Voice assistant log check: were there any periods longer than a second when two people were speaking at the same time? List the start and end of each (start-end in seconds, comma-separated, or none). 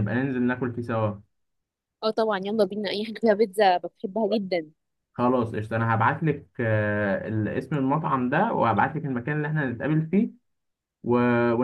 none